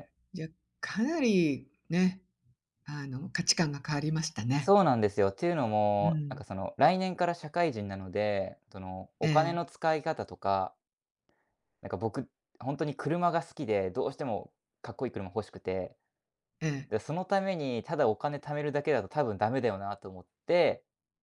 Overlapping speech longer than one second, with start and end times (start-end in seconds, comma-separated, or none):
none